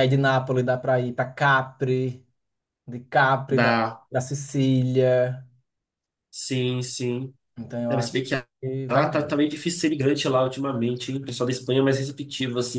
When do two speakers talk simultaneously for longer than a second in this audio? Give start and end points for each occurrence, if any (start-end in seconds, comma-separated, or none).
none